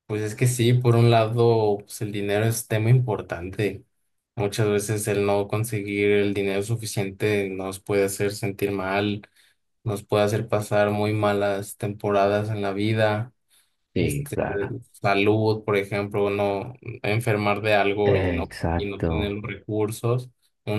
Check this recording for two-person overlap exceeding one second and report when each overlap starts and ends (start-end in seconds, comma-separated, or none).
18.0-19.4